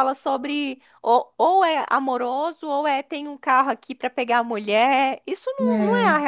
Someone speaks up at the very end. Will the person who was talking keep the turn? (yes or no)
yes